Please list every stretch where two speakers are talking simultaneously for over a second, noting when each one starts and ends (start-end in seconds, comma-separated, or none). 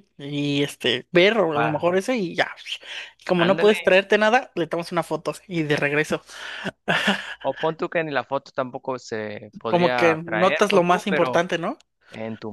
9.7-11.4